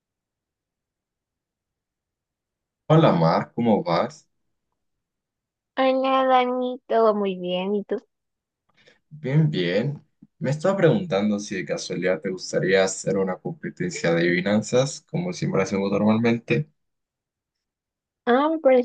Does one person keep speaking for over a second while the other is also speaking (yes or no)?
no